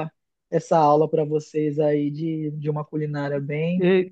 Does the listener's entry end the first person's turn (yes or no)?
yes